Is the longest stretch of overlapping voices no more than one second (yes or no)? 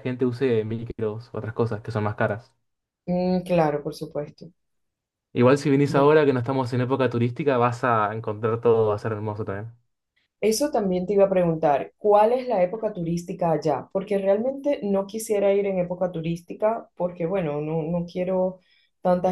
yes